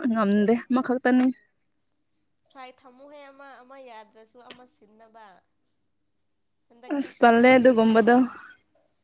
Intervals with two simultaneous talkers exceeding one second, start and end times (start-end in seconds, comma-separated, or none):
7.0-8.2